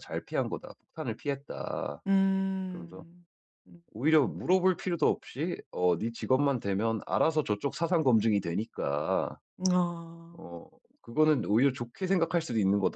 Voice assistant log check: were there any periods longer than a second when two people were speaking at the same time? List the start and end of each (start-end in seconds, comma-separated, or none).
none